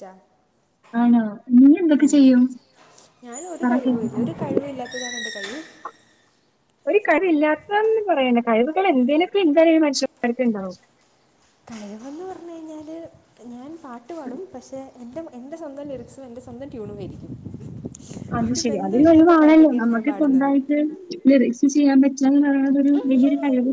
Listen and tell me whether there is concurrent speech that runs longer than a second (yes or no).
yes